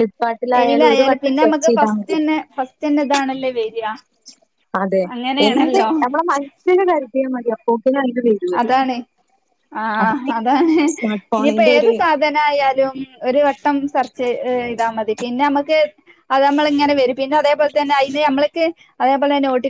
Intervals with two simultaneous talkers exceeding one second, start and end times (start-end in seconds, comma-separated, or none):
0.6-2.2